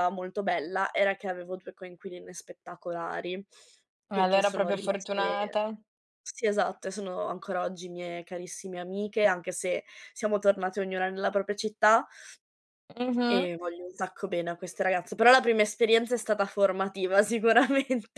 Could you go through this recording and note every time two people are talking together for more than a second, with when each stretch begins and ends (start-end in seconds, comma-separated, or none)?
4.1-5.6